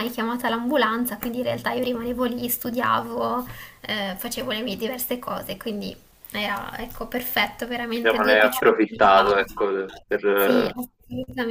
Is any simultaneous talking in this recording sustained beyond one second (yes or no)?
yes